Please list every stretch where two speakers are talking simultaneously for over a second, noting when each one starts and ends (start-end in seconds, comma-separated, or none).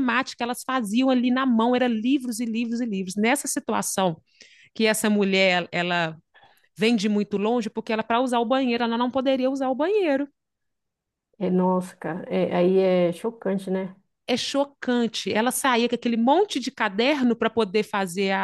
none